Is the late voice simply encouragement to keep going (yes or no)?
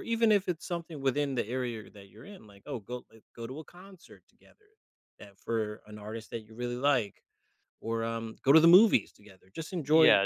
no